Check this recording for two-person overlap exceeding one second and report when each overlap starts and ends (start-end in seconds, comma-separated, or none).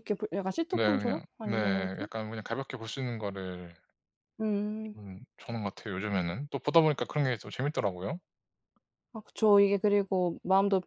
0.7-2.1